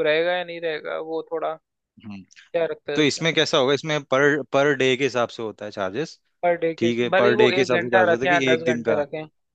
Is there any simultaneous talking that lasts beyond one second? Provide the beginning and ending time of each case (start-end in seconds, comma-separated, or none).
6.8-8.9